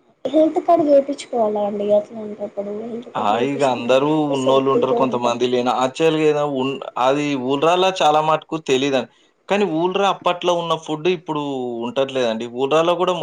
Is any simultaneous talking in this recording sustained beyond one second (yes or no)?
yes